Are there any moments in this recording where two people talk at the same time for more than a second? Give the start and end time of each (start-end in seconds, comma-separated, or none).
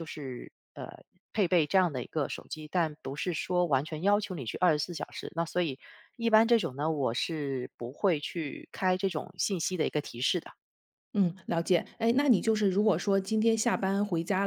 none